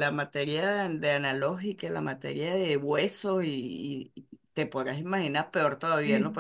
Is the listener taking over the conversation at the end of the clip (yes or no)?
no